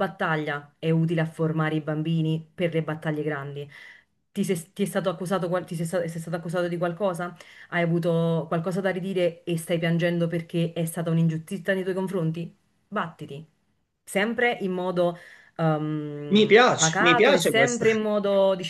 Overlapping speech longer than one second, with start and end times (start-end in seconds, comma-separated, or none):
16.3-17.9